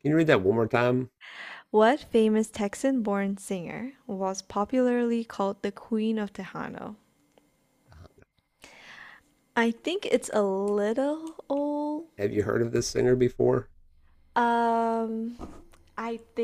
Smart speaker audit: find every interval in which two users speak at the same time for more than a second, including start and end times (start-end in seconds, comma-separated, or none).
none